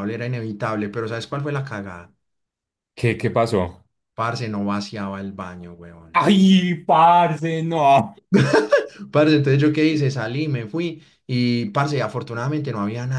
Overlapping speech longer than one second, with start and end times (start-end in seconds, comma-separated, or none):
none